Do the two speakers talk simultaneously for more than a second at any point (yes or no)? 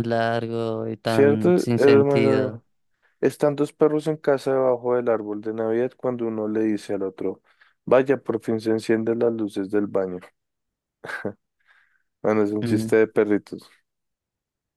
yes